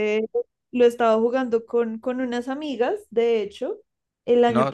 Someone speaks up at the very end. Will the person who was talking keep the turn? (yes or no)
yes